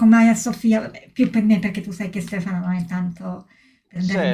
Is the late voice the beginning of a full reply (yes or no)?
yes